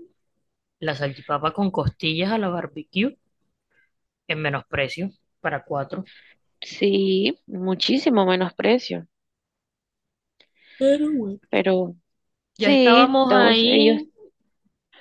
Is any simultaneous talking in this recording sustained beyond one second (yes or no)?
yes